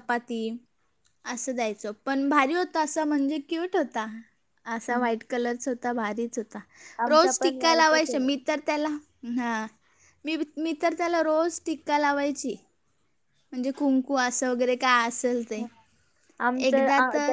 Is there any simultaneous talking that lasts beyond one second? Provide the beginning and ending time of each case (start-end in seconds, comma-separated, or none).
7.1-8.3